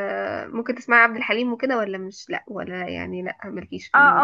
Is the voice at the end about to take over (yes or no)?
yes